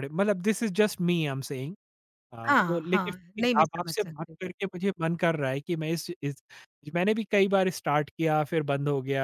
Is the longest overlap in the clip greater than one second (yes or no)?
yes